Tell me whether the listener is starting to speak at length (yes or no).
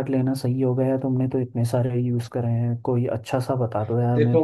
yes